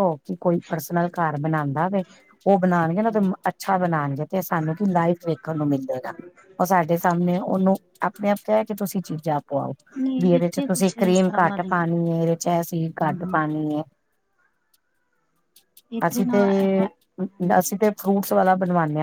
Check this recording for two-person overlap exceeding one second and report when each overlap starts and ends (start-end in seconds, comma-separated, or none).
10.2-11.9